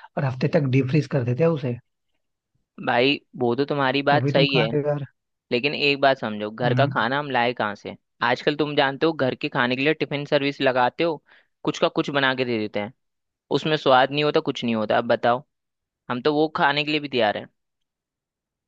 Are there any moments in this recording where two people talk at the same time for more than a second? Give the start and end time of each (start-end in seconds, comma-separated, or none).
none